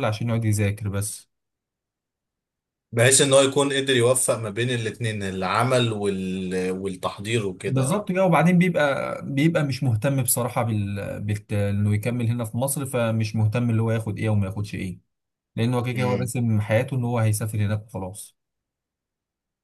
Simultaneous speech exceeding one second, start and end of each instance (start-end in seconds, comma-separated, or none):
none